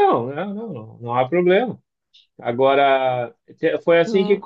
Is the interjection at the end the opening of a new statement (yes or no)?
no